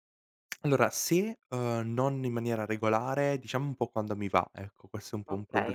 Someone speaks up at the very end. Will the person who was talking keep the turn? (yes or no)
no